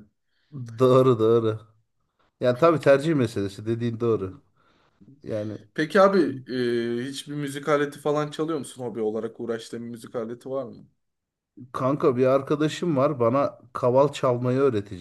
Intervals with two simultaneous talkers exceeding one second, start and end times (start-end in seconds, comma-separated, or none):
none